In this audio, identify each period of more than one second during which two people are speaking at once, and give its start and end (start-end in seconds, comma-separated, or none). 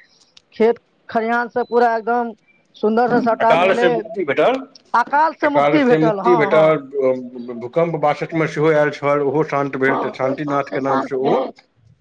9.9-11.4